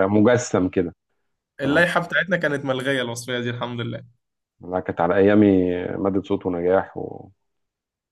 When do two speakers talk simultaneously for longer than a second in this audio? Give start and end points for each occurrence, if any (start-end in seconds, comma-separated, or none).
none